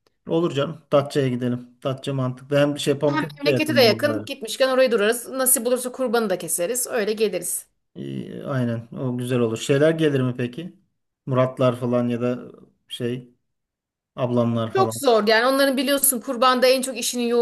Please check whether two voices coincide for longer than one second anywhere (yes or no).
yes